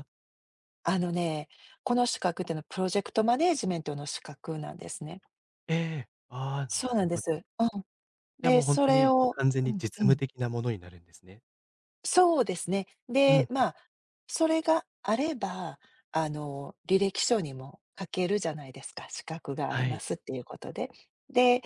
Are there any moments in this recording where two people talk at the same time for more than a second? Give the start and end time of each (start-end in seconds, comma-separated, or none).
8.4-10.2